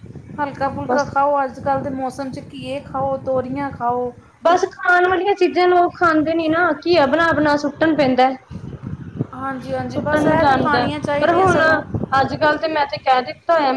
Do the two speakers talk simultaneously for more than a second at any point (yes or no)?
yes